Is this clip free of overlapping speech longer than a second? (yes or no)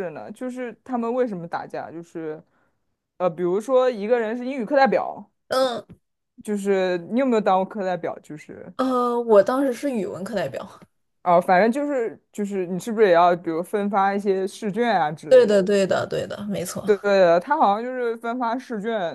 yes